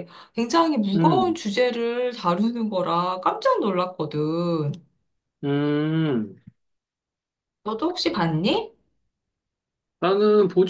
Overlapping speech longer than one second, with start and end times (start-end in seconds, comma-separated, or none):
none